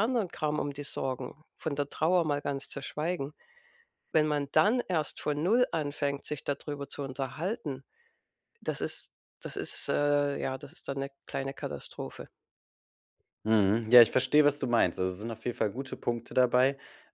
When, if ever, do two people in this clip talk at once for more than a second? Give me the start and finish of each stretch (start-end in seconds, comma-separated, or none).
none